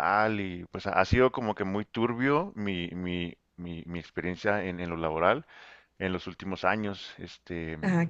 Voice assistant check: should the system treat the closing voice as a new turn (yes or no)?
no